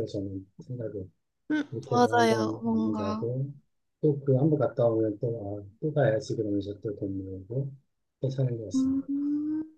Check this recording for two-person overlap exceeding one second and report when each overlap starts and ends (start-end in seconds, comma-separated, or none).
1.7-3.3